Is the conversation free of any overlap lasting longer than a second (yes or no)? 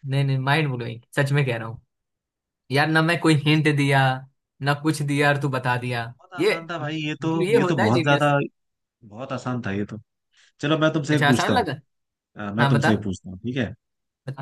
no